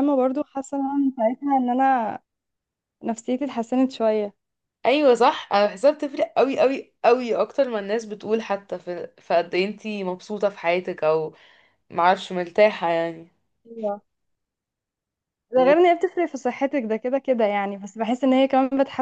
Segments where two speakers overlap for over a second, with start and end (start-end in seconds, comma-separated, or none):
none